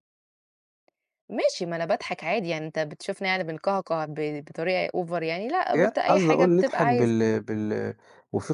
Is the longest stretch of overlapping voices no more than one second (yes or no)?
no